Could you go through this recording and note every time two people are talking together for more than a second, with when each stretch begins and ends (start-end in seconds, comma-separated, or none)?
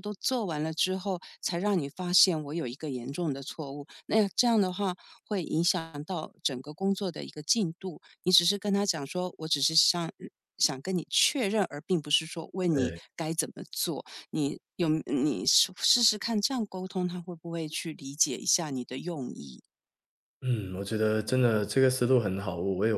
none